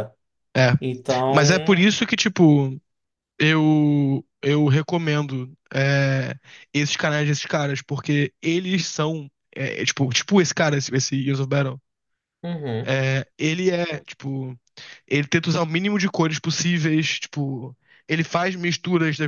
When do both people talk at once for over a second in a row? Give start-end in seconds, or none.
none